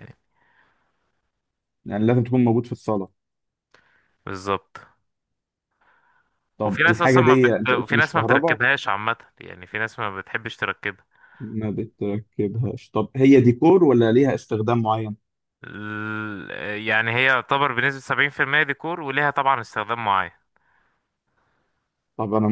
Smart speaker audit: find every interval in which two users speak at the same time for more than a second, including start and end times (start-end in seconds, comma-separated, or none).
6.7-8.6